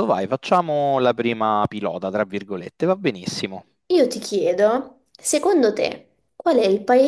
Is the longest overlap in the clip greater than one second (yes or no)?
no